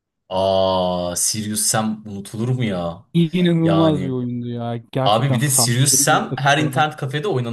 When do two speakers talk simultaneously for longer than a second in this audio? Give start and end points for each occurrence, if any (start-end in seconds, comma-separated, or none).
5.0-6.8